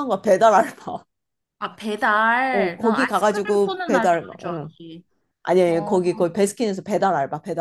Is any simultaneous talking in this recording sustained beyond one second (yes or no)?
yes